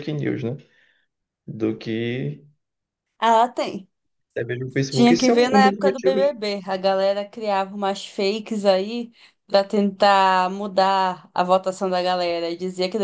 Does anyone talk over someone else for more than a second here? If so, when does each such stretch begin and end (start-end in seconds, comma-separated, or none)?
4.9-6.2